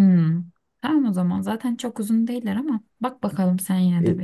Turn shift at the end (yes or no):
yes